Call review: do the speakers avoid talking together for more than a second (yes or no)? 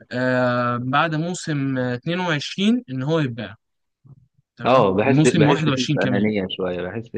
no